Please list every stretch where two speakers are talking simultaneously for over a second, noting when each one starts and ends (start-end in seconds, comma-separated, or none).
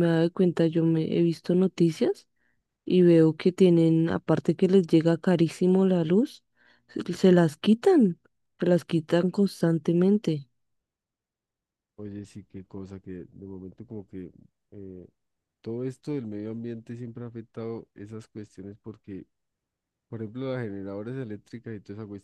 none